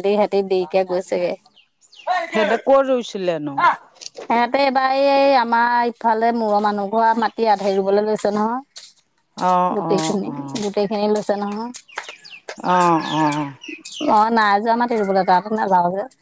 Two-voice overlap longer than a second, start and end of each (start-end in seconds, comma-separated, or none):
none